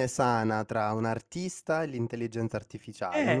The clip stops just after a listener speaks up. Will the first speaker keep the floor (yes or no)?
no